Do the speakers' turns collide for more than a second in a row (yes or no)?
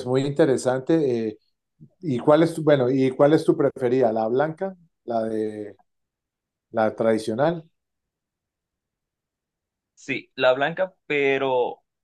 no